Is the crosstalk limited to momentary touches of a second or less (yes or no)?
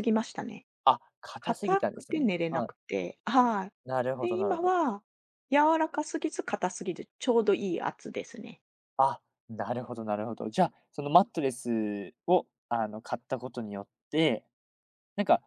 no